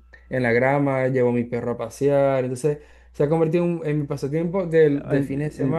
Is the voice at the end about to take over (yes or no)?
yes